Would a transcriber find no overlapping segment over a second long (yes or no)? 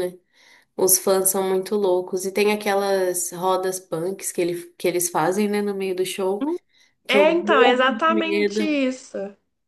no